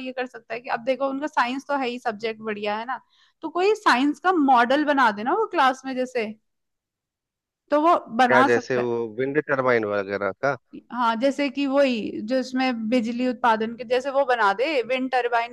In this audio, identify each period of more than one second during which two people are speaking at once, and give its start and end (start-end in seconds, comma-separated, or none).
none